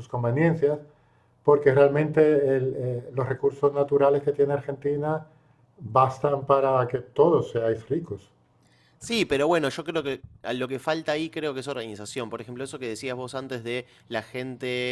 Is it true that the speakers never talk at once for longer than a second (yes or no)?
yes